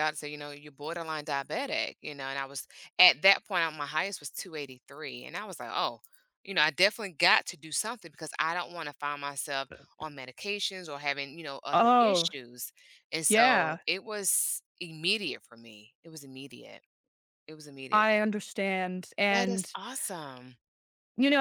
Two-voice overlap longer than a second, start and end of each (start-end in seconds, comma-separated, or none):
none